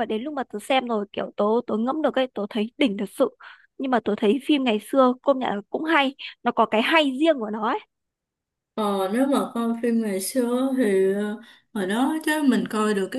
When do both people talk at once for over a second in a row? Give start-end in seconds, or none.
none